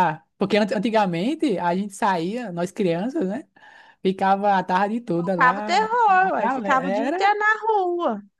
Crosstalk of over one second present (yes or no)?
yes